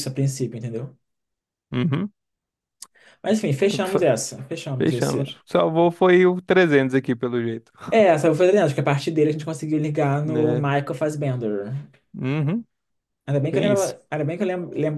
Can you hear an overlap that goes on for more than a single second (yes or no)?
no